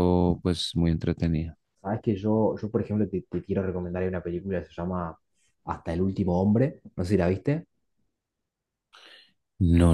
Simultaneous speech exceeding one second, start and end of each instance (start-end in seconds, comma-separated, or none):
none